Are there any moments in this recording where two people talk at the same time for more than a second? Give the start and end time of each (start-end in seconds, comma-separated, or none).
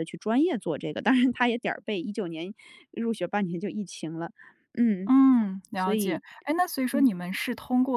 none